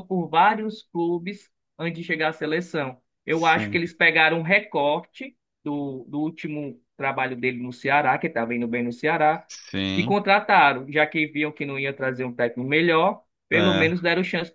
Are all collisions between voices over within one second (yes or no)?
yes